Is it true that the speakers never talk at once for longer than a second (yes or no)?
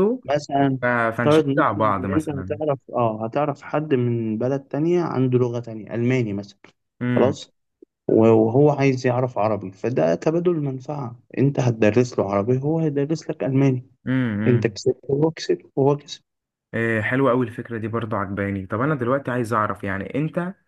no